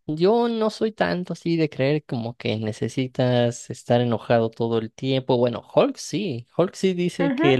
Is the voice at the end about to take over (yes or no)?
no